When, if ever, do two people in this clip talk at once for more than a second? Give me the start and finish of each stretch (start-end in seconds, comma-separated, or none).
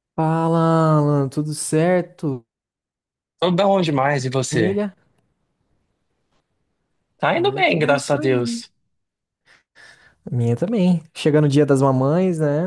7.3-8.6